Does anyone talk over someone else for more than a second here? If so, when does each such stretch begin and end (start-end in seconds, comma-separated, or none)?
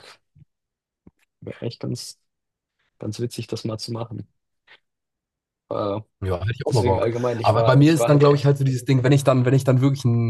6.7-8.5